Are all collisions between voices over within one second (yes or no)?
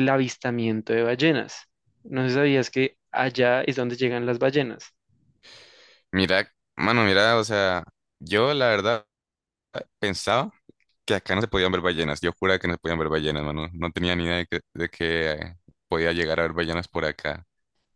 yes